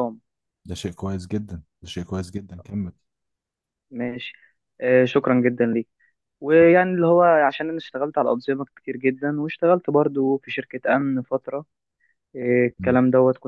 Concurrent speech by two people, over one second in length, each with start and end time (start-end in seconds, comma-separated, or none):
none